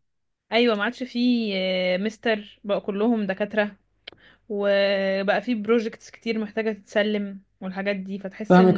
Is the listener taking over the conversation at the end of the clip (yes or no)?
yes